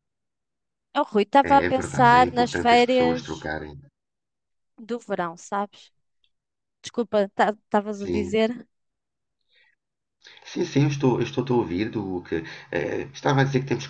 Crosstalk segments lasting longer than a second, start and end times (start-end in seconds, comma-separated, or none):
1.5-3.5